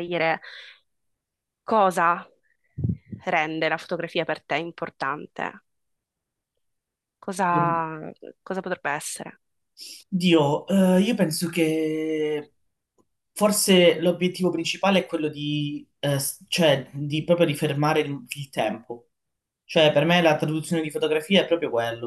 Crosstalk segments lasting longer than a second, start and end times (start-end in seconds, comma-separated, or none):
none